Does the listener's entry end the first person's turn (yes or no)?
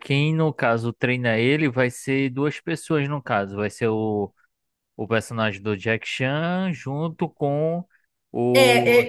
yes